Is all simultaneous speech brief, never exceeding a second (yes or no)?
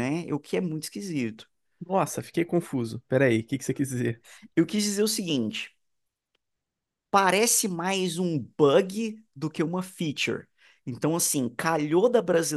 yes